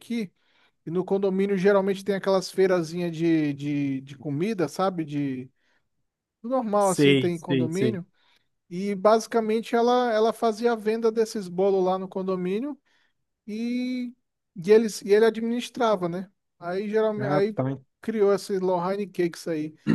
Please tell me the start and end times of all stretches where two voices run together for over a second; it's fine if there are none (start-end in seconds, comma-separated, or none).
6.8-8.0